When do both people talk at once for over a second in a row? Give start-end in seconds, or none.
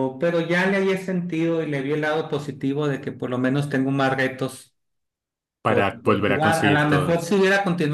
5.6-7.2